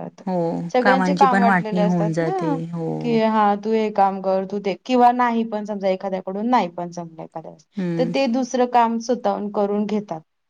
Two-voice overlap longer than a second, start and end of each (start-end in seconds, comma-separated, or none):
0.8-2.5